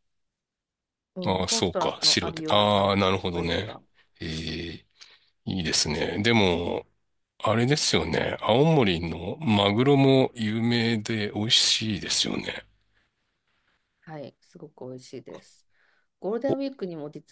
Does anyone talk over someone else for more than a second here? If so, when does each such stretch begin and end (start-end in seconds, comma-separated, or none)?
1.2-3.7